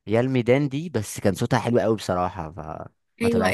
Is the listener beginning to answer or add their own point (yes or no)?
yes